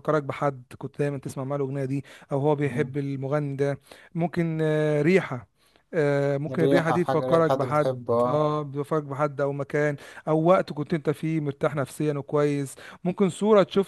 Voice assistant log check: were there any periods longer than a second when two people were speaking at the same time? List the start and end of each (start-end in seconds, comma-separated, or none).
6.5-8.4